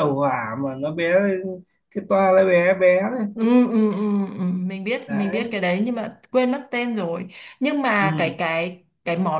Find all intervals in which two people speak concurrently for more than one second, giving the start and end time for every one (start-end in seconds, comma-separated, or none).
none